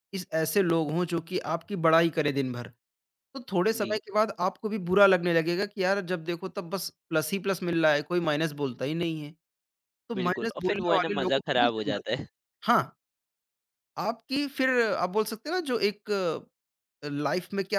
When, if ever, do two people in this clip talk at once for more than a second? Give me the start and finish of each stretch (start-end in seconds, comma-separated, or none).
10.1-12.2